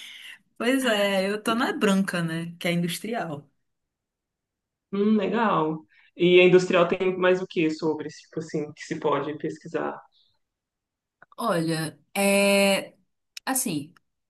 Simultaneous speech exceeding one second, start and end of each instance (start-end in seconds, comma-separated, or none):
none